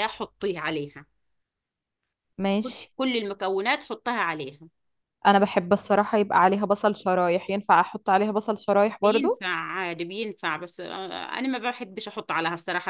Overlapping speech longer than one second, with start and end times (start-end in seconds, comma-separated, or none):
none